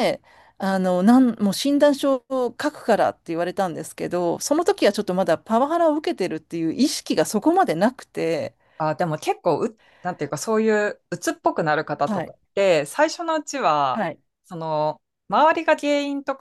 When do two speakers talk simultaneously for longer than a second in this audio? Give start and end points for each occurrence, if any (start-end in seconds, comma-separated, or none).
none